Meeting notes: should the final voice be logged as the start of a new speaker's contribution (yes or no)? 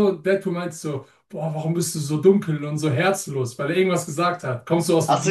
yes